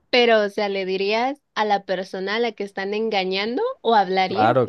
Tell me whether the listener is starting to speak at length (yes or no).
yes